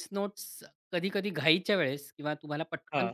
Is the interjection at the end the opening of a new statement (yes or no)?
no